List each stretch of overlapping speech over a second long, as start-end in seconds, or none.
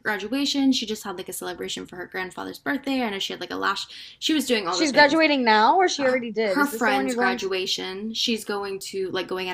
6.0-7.5